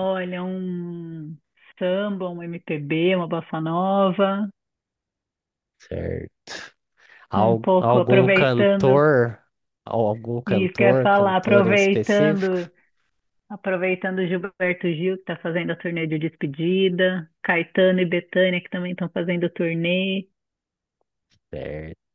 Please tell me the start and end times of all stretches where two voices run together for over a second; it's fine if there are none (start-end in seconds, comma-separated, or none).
7.3-9.0, 10.5-12.6